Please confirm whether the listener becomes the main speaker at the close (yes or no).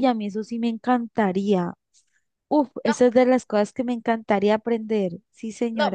yes